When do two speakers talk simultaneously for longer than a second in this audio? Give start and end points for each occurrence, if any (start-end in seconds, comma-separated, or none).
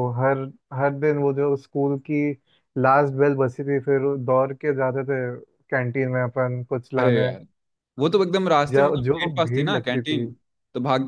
8.7-10.2